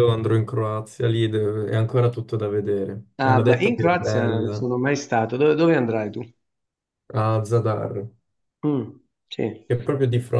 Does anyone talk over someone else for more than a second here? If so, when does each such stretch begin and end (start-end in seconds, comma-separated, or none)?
3.2-4.7